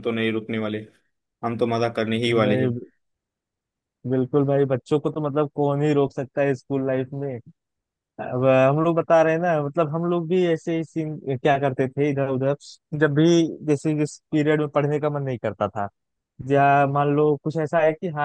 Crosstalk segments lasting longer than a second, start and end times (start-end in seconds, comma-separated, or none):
none